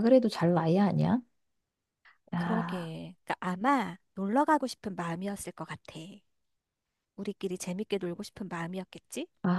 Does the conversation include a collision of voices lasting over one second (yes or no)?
no